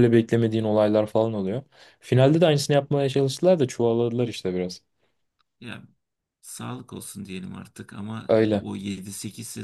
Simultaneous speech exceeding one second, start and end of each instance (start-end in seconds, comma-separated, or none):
none